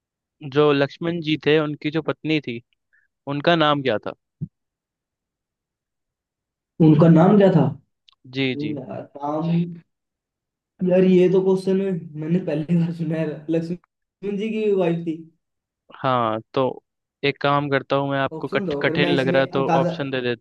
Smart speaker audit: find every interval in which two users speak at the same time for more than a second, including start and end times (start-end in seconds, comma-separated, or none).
18.3-19.9